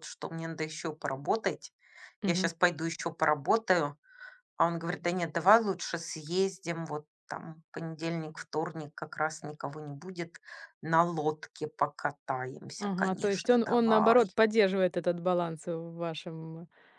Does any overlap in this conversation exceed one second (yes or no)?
yes